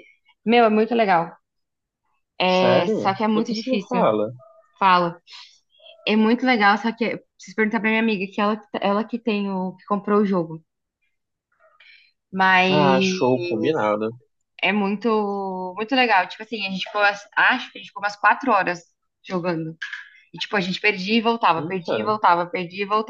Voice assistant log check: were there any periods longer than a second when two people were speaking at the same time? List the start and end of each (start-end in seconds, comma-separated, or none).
2.6-4.1